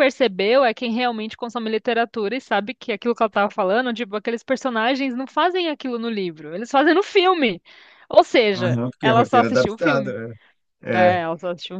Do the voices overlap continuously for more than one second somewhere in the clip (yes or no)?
yes